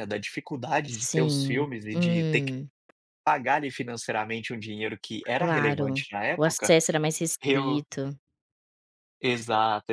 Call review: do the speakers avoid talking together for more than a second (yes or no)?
no